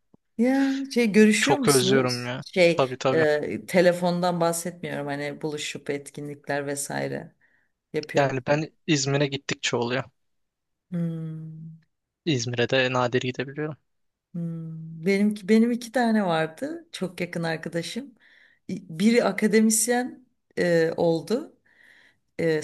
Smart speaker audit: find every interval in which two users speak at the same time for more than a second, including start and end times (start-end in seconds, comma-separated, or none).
1.4-3.3